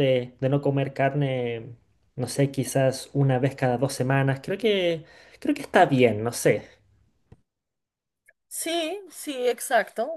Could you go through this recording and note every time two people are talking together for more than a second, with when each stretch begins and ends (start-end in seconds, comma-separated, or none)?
none